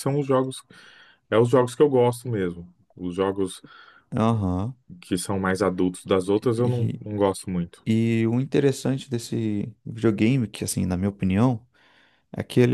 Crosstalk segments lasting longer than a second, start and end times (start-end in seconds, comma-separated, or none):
none